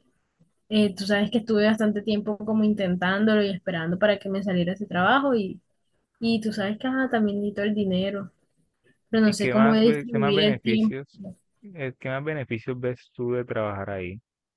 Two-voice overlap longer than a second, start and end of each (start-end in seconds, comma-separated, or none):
9.2-10.9